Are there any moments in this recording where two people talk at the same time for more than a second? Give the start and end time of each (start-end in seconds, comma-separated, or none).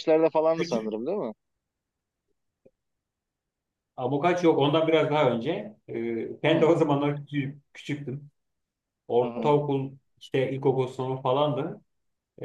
none